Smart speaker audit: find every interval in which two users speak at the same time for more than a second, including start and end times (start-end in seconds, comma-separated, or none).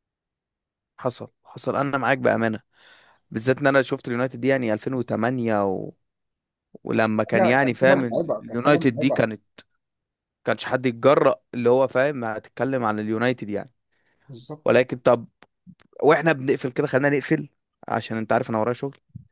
7.4-9.3